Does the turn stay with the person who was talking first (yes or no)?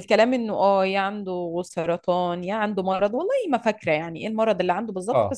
yes